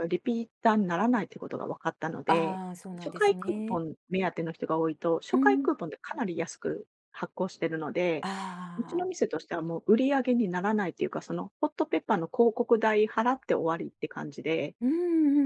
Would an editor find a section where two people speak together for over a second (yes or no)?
yes